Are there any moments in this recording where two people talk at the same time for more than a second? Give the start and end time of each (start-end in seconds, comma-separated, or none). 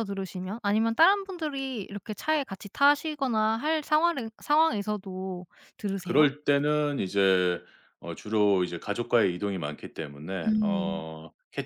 none